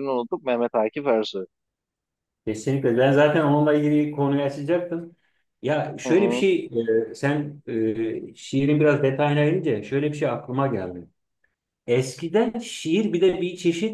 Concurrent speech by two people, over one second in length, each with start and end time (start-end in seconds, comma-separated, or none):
none